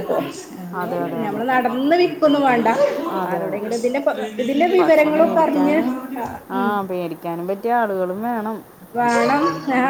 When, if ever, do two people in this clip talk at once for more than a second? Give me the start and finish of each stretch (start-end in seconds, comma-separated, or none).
none